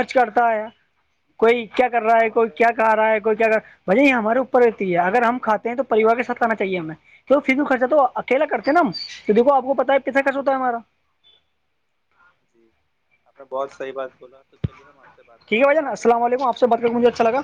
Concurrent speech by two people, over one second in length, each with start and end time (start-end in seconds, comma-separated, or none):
15.5-16.8